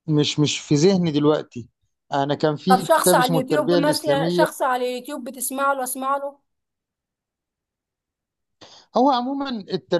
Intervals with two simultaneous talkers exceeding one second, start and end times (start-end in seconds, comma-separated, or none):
2.7-4.5